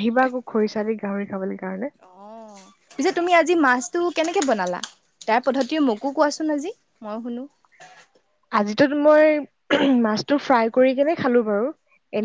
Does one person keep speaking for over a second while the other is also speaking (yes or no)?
no